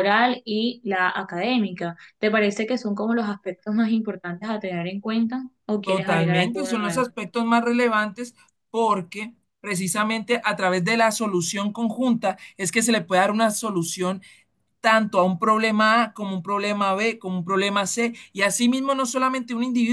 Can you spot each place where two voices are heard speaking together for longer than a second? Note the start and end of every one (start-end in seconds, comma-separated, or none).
5.8-7.0